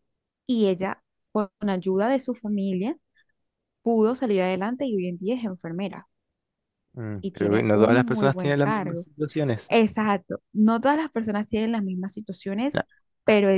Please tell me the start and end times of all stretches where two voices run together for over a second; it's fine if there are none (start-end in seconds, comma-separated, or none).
7.2-9.1